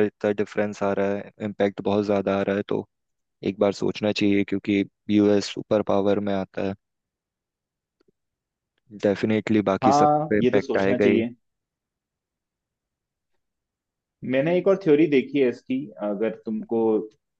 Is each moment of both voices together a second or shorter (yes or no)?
no